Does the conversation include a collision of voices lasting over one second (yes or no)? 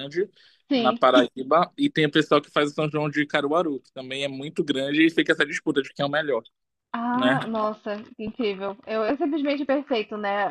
no